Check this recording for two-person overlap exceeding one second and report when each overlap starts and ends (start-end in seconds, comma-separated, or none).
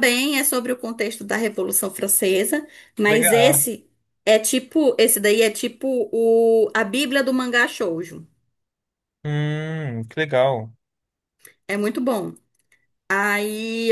none